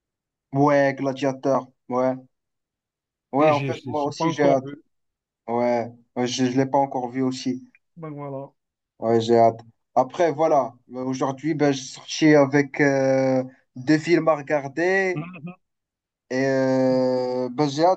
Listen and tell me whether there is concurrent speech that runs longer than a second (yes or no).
yes